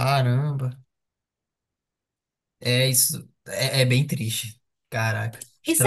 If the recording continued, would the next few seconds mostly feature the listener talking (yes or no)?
yes